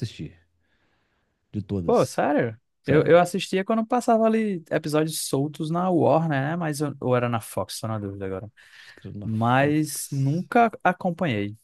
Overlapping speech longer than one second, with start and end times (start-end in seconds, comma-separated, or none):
9.2-10.4